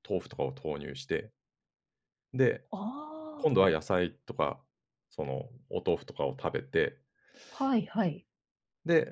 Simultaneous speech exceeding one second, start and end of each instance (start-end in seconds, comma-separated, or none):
none